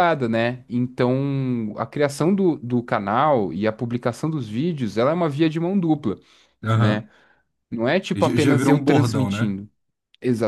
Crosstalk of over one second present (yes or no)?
yes